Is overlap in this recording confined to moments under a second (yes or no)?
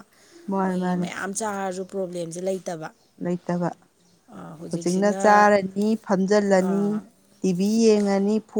yes